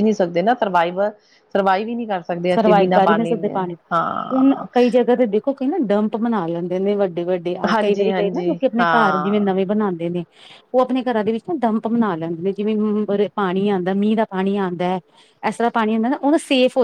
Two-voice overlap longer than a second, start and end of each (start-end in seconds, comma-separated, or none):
7.7-9.5